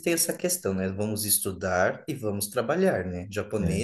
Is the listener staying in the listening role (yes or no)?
yes